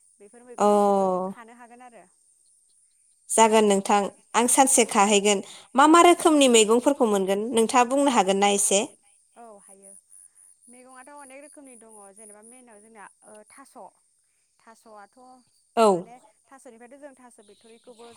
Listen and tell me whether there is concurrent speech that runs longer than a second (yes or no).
no